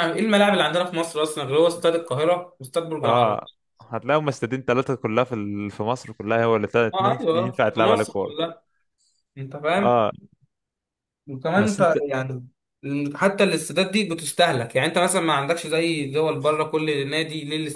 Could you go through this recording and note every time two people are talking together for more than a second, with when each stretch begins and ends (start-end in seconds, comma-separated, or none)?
6.9-8.5